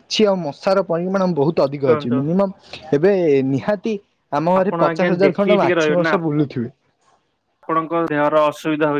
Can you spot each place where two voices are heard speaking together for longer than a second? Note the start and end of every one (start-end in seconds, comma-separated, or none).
4.6-6.1